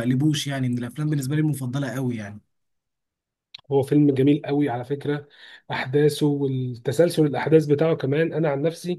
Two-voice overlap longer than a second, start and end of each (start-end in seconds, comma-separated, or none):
none